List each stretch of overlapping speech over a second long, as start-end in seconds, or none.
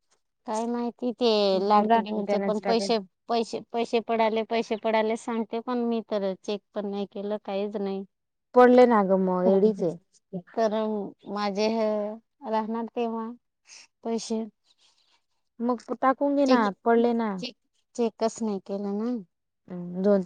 1.7-2.9